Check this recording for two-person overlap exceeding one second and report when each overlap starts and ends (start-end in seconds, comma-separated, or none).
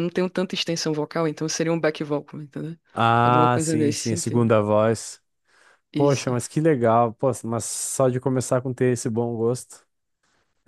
3.2-4.5